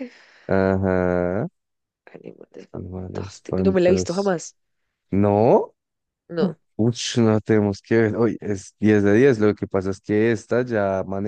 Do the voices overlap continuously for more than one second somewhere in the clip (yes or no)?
yes